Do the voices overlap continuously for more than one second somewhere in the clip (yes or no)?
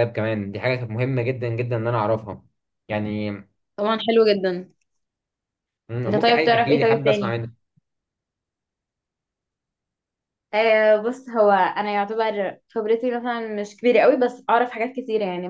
yes